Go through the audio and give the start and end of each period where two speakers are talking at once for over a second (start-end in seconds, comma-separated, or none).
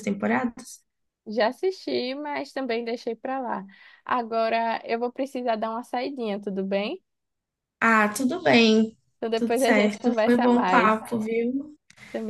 9.3-11.0